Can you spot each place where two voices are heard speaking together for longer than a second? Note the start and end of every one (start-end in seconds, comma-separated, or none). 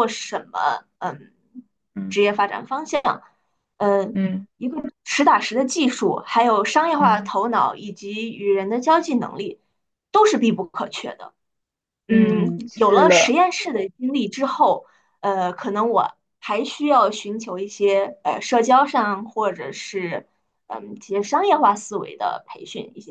12.1-13.4